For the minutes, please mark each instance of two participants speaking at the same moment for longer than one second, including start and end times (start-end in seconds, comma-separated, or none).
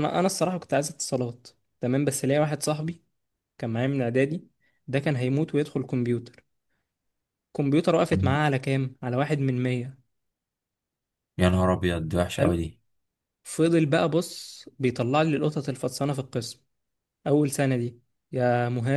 none